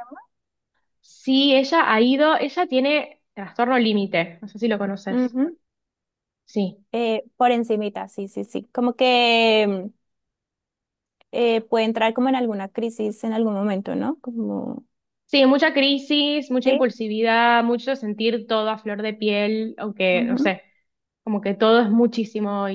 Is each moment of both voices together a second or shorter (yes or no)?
yes